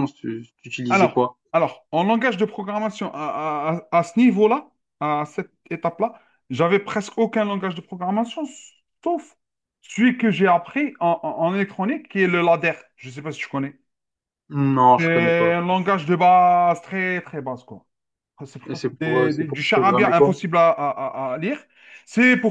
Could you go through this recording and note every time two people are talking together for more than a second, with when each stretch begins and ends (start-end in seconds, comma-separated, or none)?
18.7-20.4